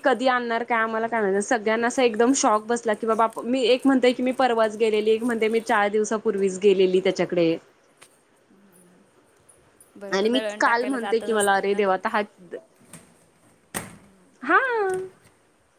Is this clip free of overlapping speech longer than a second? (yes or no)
no